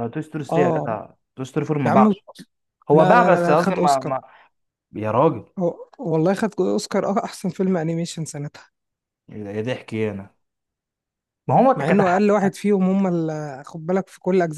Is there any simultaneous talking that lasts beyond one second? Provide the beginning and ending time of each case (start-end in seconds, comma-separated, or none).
2.9-4.1